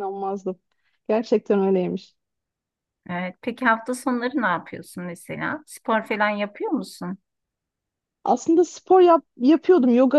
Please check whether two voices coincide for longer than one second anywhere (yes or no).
no